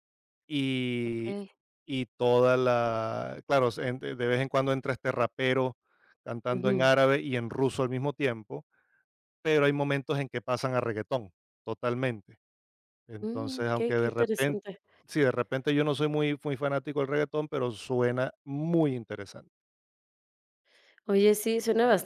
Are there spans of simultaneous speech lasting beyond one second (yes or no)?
yes